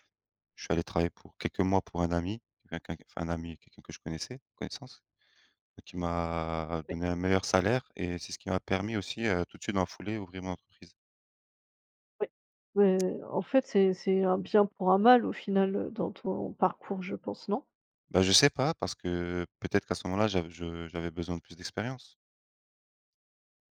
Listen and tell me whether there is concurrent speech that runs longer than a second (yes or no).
no